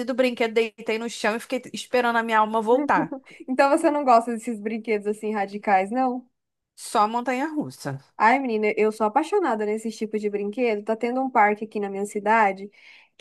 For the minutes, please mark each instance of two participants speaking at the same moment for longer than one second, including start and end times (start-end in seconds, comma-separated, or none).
none